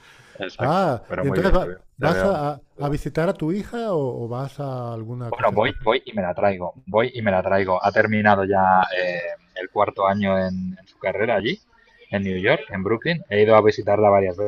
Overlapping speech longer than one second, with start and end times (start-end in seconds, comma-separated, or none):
0.6-2.4